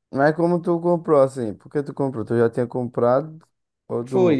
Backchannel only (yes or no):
no